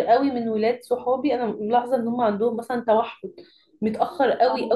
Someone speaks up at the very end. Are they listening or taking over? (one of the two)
listening